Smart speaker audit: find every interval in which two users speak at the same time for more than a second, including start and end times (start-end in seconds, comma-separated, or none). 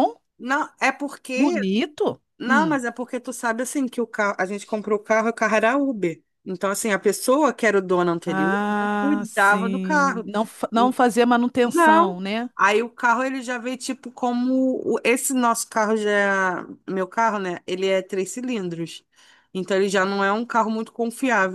8.2-10.2